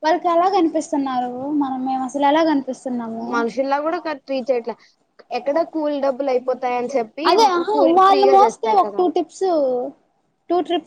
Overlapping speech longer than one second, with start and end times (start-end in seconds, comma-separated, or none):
none